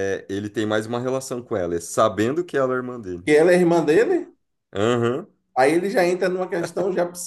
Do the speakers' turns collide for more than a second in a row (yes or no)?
no